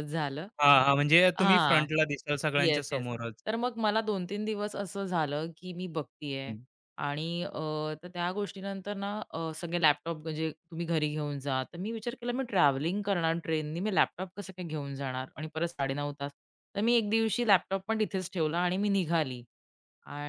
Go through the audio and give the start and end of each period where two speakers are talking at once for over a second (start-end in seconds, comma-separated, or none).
none